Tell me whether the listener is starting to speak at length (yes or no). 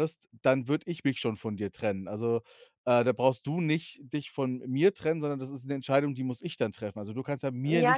yes